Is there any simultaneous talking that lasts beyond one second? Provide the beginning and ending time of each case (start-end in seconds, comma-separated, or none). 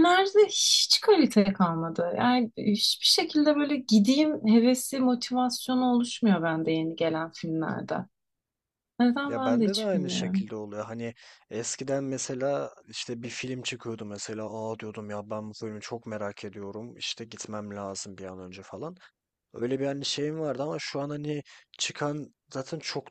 9.2-10.5